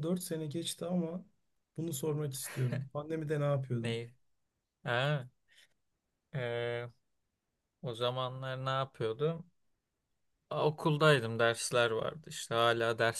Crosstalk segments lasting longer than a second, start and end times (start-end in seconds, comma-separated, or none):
none